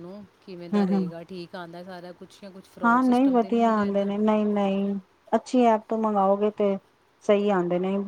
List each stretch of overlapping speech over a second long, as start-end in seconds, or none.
2.9-4.1